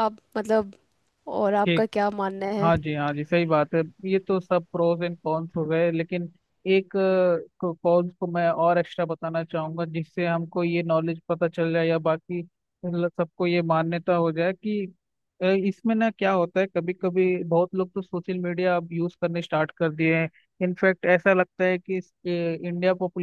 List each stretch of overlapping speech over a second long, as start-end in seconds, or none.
none